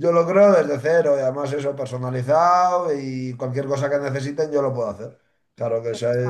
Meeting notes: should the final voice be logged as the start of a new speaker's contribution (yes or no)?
no